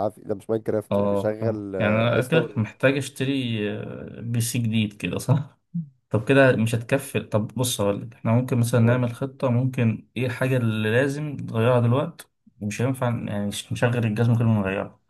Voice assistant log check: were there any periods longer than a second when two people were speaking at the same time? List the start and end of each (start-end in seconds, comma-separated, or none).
0.9-2.6